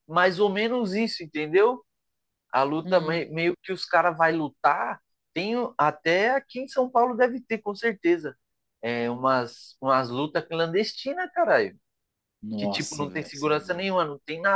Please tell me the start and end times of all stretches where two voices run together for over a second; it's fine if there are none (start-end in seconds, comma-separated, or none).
12.6-14.0